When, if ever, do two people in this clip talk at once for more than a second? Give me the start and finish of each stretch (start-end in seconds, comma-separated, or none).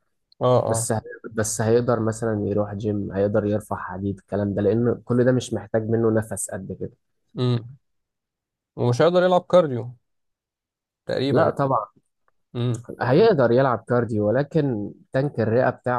none